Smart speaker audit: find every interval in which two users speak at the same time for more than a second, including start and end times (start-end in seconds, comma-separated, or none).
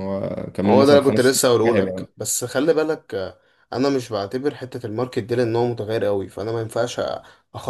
0.7-2.1